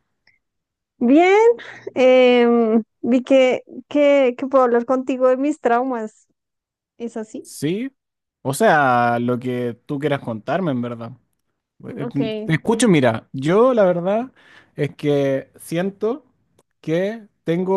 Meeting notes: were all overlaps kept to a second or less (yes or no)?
yes